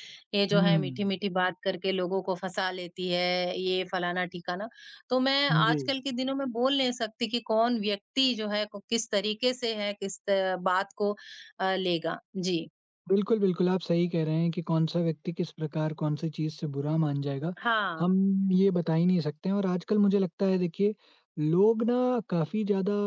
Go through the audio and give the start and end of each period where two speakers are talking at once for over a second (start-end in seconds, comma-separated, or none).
none